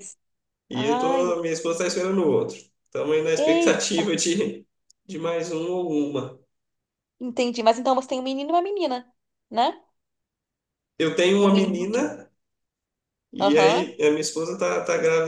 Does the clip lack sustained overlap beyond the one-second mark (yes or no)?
no